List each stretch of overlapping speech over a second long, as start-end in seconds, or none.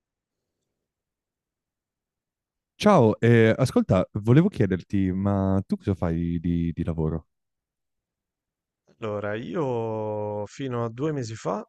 none